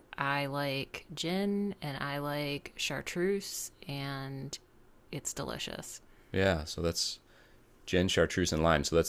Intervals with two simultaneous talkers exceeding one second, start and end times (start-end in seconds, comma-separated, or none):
none